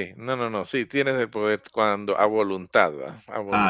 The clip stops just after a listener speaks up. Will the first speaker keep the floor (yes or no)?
no